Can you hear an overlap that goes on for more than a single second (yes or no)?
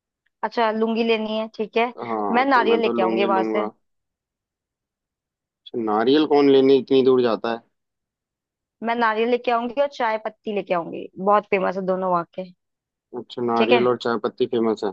yes